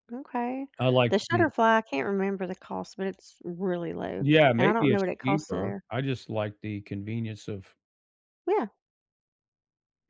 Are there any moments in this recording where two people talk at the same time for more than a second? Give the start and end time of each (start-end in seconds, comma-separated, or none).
4.2-5.8